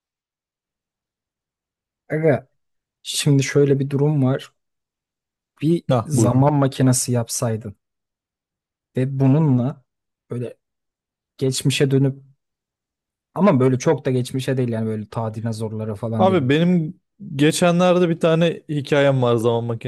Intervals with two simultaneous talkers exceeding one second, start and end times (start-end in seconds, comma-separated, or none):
none